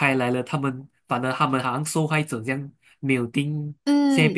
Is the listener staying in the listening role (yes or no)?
yes